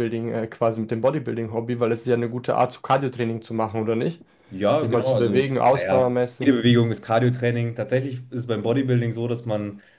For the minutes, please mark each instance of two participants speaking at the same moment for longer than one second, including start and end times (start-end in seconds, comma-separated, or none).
4.7-6.5